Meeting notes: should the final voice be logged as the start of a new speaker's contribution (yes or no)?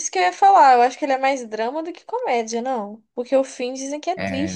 yes